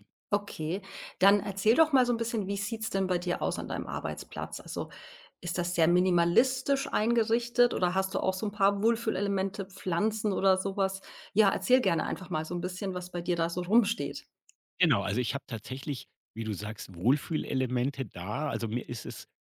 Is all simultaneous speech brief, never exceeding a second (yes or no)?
yes